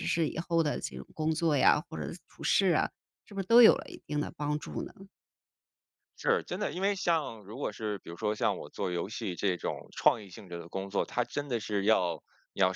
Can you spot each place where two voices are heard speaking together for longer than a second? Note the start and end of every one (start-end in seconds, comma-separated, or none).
none